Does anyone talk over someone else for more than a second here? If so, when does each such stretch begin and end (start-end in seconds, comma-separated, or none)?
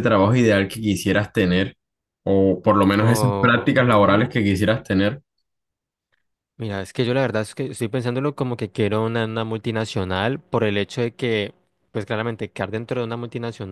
3.0-4.3